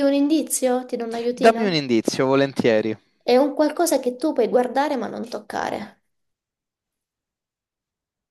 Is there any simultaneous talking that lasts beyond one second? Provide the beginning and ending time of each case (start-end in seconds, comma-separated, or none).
none